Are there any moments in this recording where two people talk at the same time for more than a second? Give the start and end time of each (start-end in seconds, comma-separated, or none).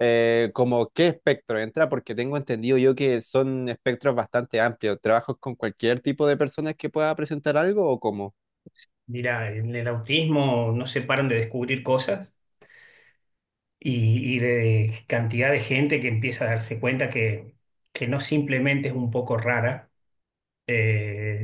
none